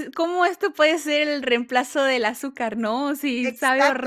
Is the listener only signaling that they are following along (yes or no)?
no